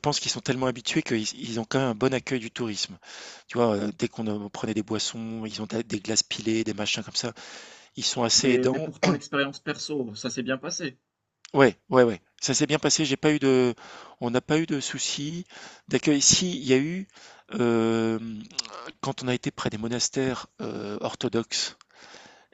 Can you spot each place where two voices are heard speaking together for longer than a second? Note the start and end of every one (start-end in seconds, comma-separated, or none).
none